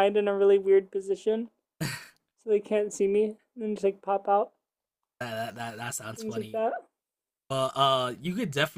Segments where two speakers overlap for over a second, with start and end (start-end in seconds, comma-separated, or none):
none